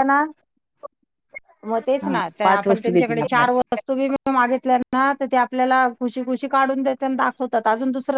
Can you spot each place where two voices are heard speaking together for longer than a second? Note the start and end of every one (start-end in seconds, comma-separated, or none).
2.0-3.6